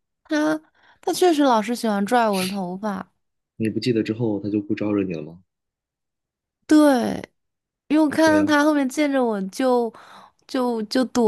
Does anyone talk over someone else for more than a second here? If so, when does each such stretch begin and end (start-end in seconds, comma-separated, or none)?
none